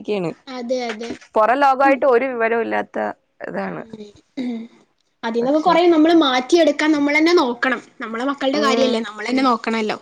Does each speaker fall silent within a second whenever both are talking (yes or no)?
yes